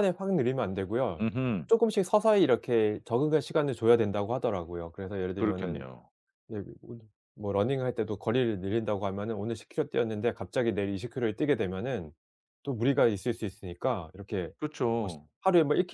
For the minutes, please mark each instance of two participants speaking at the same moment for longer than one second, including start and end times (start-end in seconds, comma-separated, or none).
none